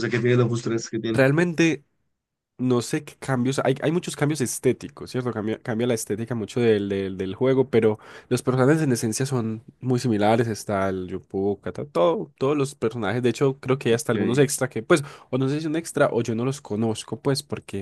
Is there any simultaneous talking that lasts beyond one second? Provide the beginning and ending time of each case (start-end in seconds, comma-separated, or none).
none